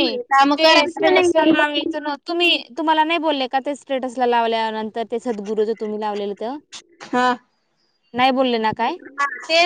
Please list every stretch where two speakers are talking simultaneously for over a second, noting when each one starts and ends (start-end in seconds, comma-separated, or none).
0.6-1.9